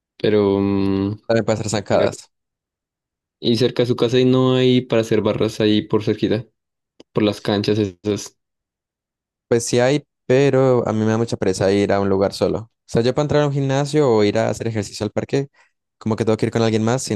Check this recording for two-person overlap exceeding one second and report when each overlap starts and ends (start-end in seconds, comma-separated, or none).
none